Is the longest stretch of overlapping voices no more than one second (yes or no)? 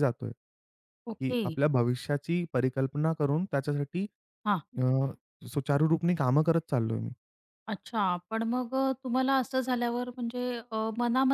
yes